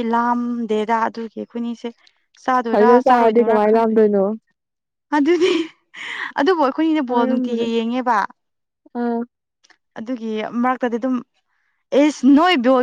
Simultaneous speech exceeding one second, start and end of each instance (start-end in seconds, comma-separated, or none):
2.7-4.0